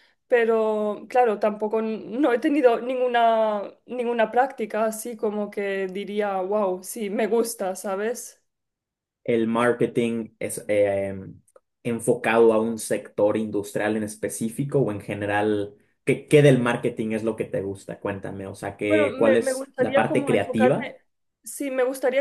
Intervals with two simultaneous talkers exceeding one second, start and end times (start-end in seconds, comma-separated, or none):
18.9-20.9